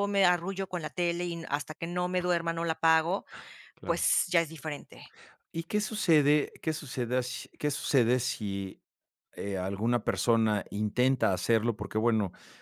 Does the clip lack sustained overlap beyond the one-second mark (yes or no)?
yes